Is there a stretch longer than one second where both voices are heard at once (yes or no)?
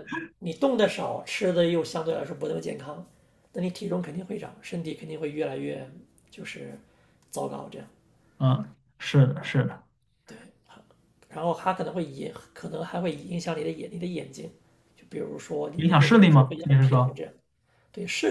yes